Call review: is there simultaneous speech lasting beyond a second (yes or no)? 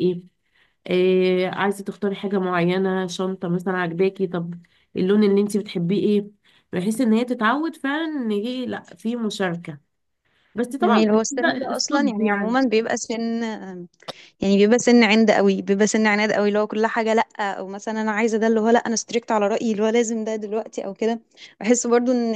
yes